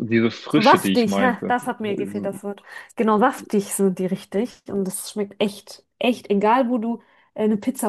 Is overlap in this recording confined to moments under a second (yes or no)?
no